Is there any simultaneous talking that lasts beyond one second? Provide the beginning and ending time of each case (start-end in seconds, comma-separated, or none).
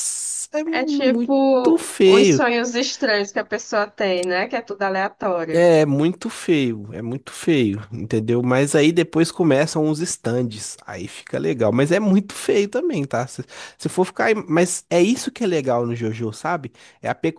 0.7-2.4